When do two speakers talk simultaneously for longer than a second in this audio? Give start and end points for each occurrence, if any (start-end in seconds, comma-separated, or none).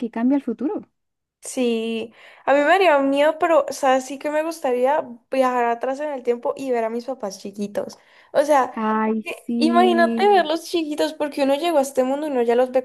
9.2-10.5